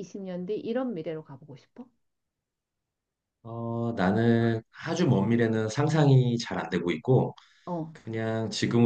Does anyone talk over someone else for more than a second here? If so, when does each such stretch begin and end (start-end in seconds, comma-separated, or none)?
none